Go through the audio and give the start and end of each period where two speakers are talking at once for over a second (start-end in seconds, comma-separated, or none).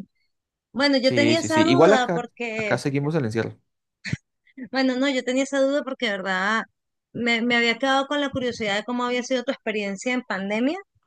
1.0-3.1